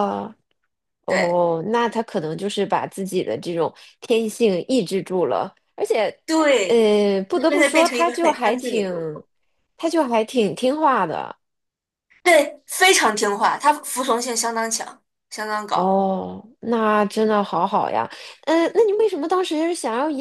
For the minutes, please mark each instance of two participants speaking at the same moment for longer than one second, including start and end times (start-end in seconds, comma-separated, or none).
7.5-8.9